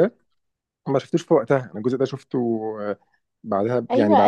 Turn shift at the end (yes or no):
yes